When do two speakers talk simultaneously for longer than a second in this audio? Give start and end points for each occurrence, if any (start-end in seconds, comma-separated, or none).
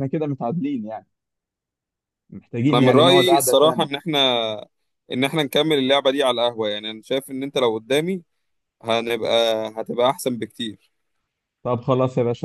2.7-3.9